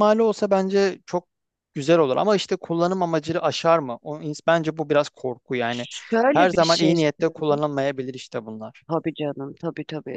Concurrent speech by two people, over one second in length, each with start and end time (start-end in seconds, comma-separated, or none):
6.3-7.6